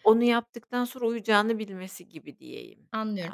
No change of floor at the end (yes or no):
no